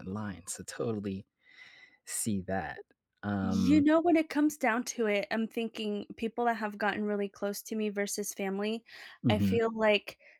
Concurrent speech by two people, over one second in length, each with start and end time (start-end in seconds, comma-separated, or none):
none